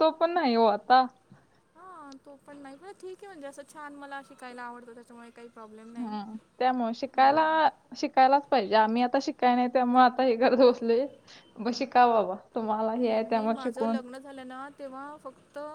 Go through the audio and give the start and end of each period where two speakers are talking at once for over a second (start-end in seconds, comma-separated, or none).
none